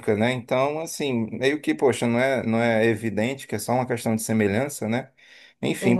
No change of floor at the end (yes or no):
yes